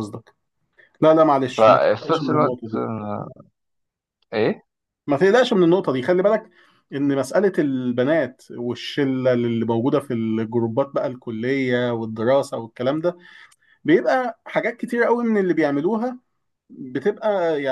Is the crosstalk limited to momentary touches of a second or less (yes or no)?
no